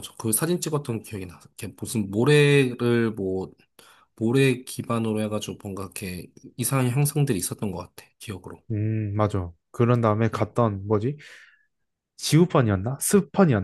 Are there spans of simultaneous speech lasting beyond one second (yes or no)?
no